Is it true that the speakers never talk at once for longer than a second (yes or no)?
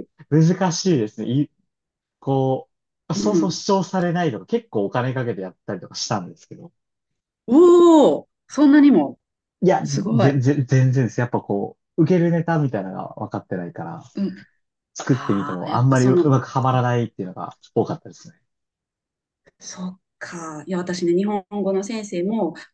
no